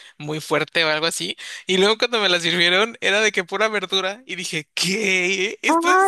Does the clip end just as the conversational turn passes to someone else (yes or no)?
yes